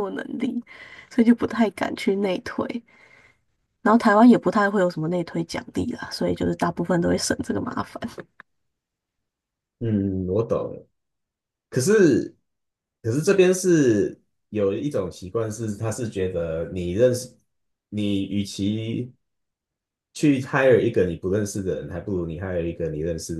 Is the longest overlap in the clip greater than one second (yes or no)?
no